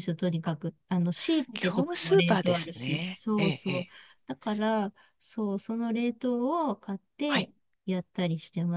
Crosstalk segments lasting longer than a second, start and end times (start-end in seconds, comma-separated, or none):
1.5-3.9